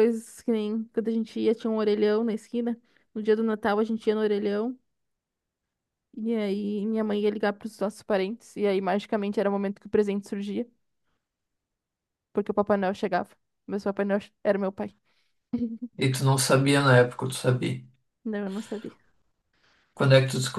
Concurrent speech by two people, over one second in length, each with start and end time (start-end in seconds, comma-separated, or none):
none